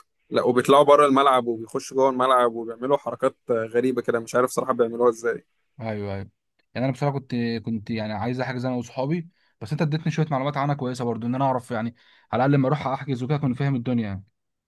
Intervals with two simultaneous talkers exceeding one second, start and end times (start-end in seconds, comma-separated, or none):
none